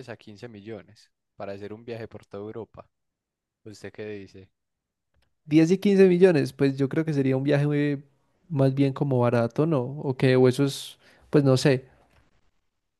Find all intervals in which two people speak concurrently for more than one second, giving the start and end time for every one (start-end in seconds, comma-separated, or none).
none